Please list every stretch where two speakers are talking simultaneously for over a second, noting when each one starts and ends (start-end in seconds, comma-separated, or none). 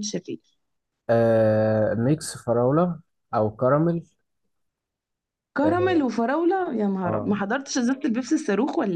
none